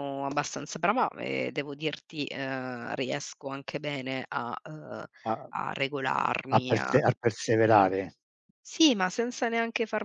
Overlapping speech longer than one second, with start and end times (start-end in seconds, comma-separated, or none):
none